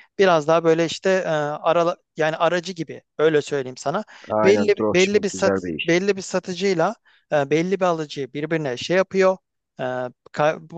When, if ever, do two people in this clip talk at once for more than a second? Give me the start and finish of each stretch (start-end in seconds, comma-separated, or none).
4.4-6.0